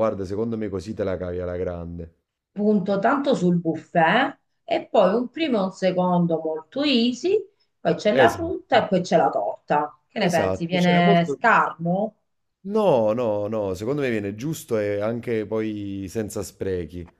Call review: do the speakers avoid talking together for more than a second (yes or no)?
no